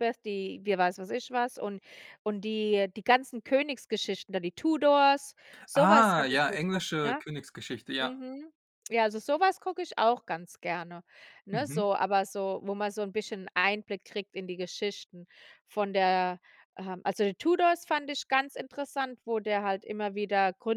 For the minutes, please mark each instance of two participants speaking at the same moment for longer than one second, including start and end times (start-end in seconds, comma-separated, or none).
5.8-7.2